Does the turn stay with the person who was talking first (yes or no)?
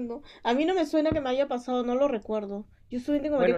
no